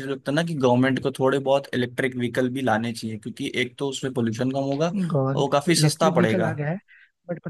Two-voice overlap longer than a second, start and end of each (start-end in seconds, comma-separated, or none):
5.1-6.5